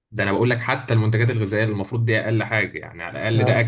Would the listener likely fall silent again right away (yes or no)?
yes